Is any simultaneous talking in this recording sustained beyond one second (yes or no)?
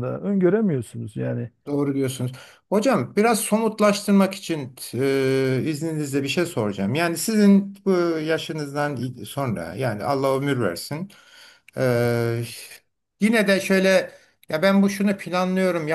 no